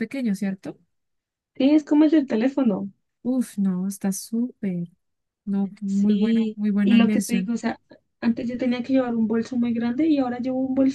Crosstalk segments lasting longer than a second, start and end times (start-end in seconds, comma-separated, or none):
5.9-7.5